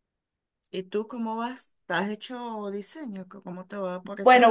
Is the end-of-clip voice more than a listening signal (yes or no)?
yes